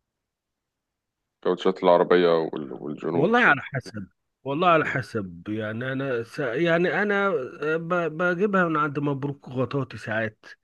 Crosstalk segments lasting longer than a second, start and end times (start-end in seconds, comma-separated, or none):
none